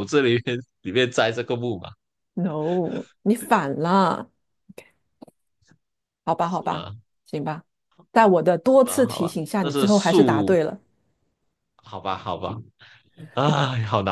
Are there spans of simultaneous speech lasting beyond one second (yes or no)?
yes